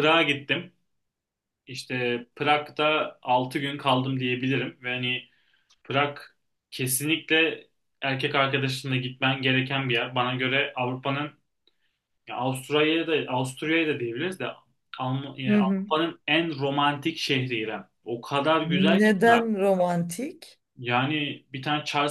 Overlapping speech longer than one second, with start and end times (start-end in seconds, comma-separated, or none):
none